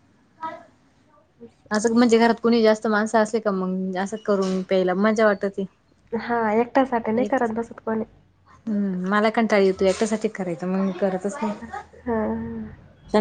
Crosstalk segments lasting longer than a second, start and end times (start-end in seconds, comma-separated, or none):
none